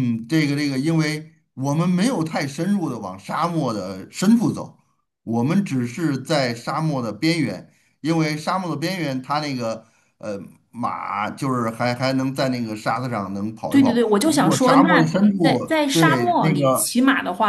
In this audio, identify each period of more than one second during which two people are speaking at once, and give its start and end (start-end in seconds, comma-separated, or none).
13.7-16.9